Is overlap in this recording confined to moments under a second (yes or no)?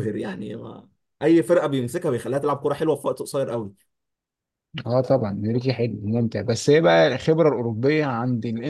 yes